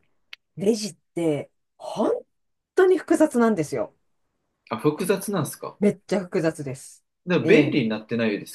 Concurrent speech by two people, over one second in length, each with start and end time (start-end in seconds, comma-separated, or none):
none